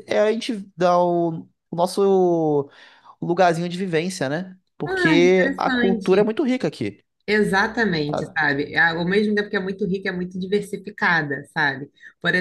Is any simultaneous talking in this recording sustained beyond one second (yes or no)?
yes